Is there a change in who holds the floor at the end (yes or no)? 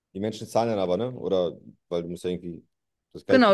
yes